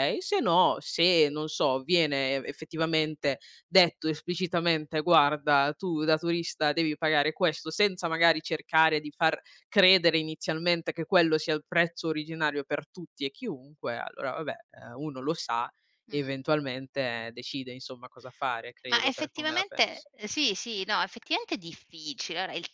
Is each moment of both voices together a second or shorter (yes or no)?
no